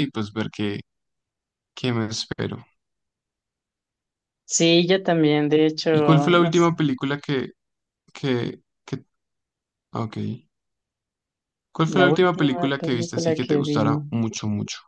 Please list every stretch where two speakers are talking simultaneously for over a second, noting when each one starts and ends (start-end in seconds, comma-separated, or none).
11.9-14.0